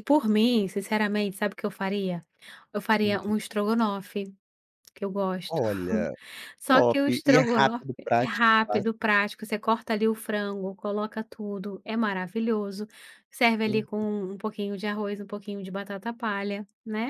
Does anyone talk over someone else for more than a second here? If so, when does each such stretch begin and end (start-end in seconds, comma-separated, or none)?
6.7-8.9